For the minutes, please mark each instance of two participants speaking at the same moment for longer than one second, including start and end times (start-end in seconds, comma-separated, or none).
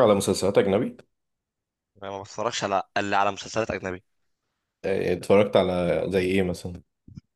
none